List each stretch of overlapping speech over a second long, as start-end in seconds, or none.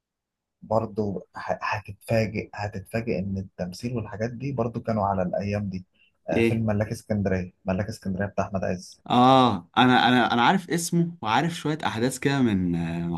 none